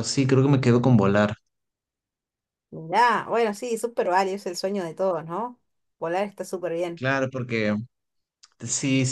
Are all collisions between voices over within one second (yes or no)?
yes